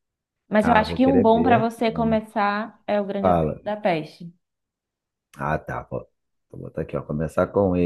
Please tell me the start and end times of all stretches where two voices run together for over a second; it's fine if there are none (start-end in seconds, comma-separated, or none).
0.6-2.2